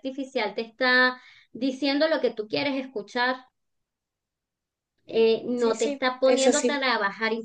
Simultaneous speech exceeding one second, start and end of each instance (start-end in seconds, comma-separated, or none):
5.1-6.8